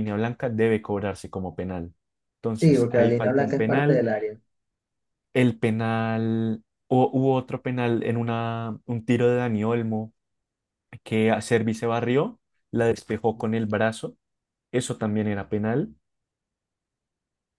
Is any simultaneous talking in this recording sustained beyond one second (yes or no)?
yes